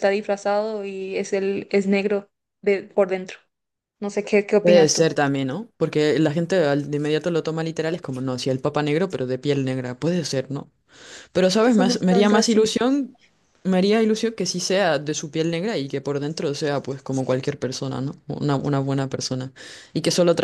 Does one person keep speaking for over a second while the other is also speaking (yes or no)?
yes